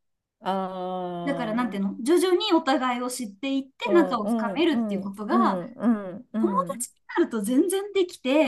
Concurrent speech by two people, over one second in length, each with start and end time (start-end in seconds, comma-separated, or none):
3.8-5.6